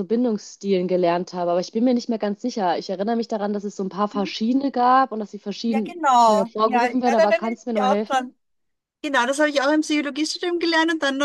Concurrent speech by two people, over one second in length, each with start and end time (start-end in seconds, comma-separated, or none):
5.7-8.3